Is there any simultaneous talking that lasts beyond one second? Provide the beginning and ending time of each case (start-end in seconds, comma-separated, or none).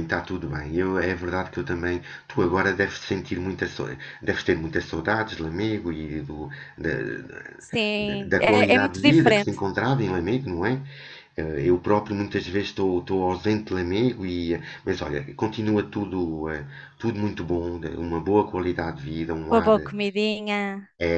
8.0-9.6